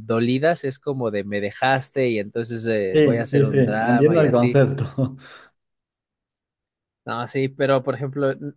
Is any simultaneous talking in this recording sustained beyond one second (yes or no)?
yes